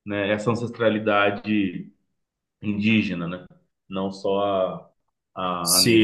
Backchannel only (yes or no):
no